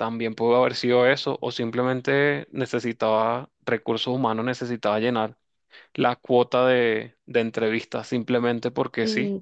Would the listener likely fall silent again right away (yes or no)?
no